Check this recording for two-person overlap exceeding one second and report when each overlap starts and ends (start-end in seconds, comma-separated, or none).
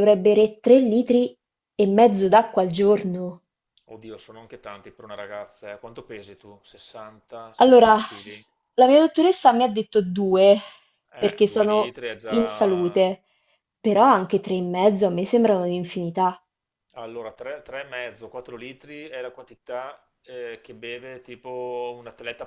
11.2-13.0